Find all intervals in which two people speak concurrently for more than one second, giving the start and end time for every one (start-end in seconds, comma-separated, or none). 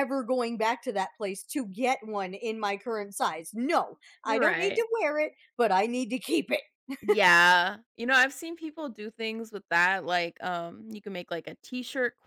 none